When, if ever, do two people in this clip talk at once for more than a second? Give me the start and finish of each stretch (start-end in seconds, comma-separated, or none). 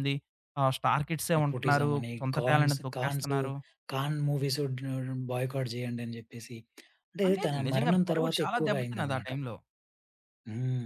1.4-3.3, 7.3-9.3